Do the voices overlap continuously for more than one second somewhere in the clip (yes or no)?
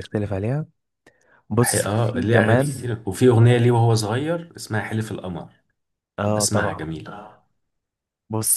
yes